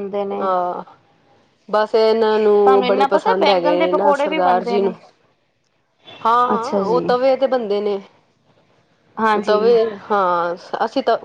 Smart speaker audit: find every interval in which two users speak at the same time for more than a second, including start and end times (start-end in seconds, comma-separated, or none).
2.5-4.9